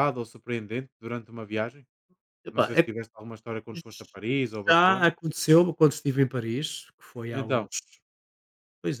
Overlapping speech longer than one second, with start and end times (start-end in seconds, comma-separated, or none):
none